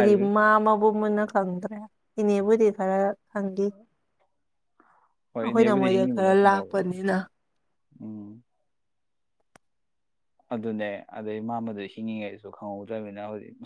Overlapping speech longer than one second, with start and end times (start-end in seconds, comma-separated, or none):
5.4-6.9